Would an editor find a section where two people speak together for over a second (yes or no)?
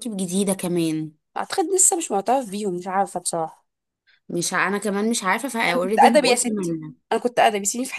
yes